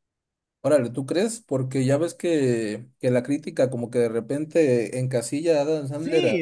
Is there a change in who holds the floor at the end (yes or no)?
yes